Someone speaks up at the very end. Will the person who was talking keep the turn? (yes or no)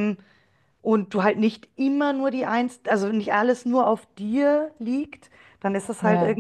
yes